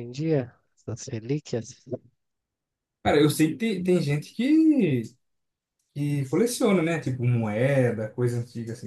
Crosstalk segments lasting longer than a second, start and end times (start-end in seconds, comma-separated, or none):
none